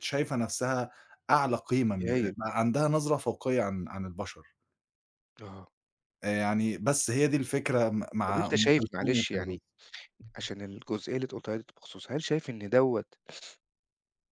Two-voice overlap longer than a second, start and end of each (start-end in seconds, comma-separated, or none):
8.3-9.6